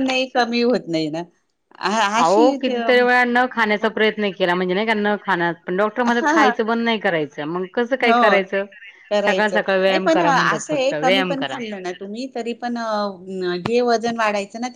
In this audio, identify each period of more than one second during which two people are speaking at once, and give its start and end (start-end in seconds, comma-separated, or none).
9.2-11.6